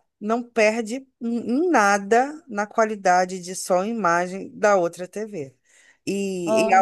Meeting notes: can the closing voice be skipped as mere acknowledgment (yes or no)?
yes